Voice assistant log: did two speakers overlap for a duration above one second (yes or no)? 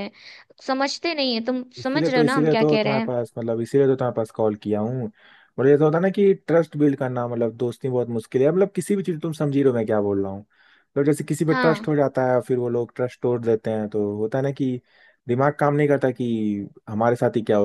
yes